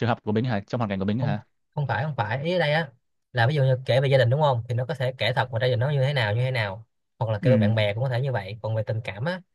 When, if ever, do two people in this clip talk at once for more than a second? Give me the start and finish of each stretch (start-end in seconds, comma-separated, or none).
none